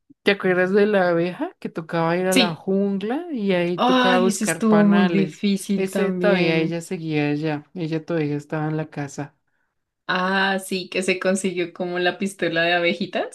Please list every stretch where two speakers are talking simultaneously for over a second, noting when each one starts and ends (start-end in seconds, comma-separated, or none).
3.8-6.8